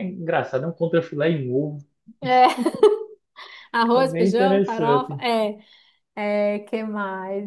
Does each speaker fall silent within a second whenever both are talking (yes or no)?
no